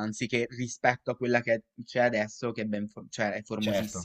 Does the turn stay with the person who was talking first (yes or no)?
no